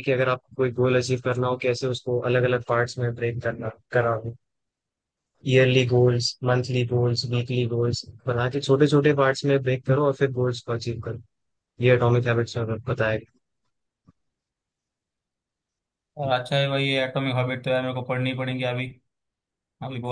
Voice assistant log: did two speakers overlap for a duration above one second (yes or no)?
no